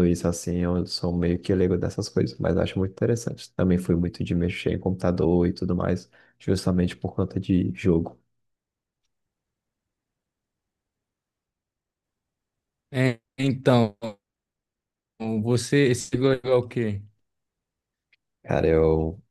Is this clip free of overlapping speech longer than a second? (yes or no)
yes